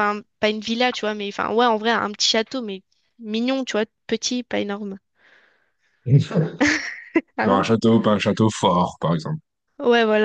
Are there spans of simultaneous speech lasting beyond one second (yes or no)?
no